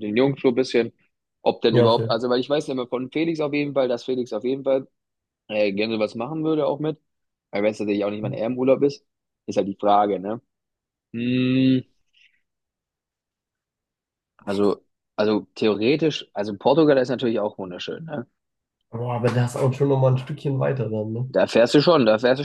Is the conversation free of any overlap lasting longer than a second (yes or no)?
yes